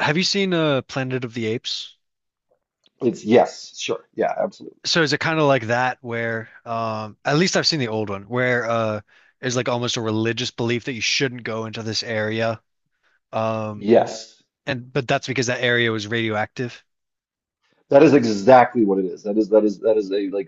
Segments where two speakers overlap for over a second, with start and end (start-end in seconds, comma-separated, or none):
none